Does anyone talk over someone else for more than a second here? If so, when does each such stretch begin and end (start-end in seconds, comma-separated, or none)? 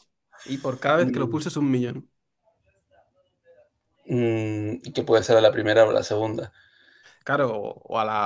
none